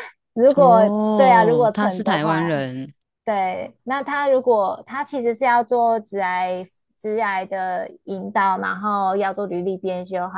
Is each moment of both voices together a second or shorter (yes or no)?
no